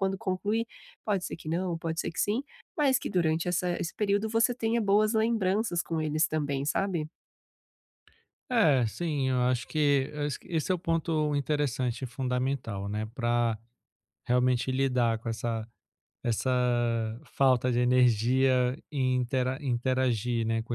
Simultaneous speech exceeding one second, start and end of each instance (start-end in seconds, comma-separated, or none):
none